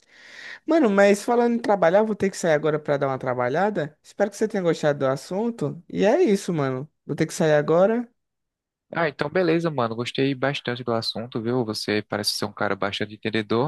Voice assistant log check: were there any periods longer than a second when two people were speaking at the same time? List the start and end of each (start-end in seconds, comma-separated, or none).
none